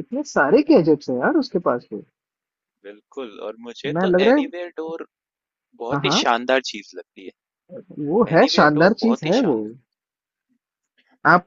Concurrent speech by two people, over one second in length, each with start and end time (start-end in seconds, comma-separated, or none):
8.0-9.6